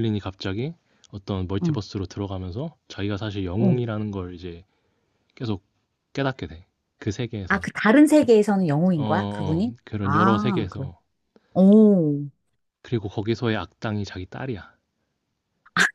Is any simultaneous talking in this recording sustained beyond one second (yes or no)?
yes